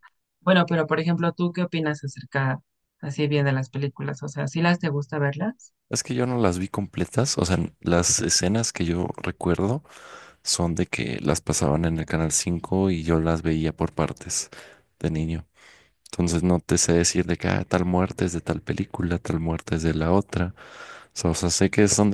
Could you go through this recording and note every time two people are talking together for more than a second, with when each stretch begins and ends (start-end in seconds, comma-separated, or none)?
none